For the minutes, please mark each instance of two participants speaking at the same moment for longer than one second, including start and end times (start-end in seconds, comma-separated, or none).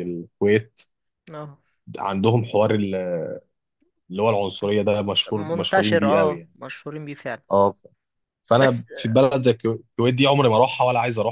5.3-6.5